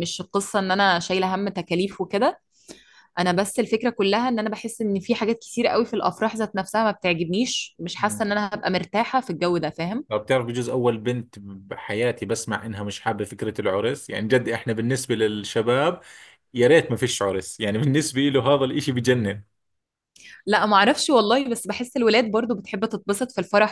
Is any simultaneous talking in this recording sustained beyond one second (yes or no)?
no